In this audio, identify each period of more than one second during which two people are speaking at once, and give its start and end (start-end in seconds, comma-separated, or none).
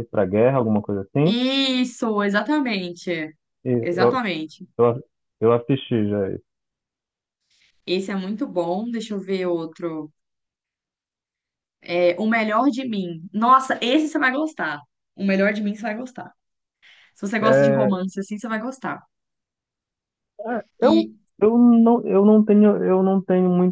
none